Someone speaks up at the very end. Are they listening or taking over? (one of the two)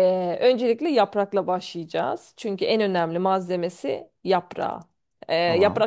listening